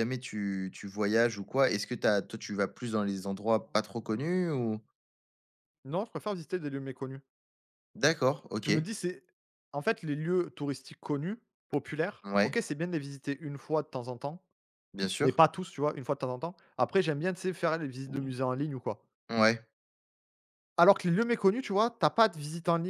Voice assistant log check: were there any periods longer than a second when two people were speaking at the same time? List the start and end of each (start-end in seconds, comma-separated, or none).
none